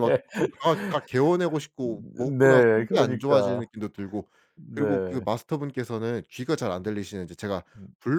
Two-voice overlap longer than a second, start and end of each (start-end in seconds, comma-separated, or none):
1.8-3.7